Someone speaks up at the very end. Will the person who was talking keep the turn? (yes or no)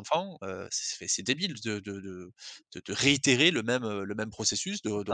no